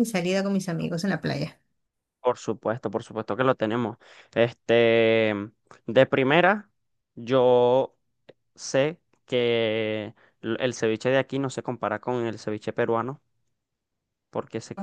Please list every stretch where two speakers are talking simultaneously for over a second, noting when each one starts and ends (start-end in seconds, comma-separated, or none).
none